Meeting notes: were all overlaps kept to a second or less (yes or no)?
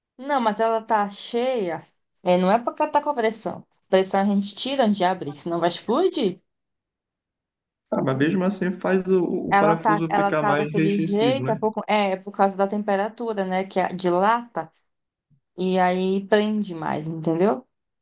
no